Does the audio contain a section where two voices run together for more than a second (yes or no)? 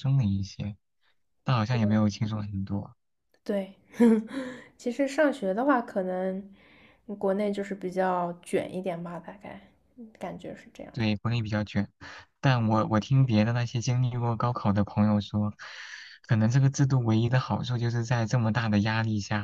no